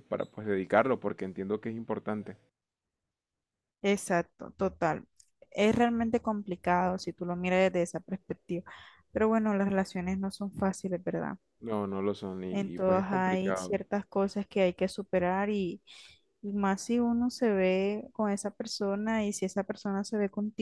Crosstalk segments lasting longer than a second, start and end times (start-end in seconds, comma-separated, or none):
12.5-13.8